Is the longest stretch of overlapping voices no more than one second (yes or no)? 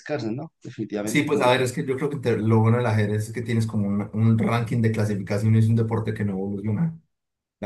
yes